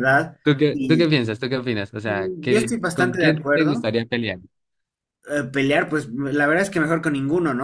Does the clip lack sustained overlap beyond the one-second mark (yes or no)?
no